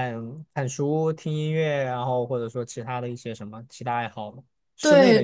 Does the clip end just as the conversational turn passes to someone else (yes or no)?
yes